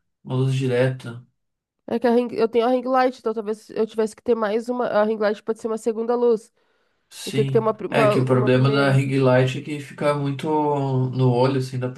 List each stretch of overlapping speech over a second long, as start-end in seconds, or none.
7.2-9.0